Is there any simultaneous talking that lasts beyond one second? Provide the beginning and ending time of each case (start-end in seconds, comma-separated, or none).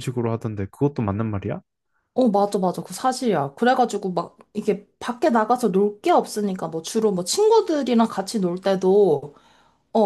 none